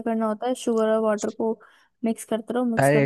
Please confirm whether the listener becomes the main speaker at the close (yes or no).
yes